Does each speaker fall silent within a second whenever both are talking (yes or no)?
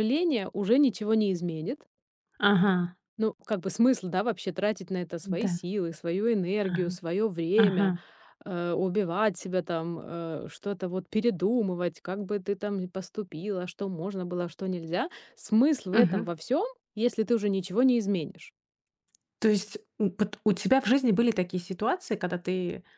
yes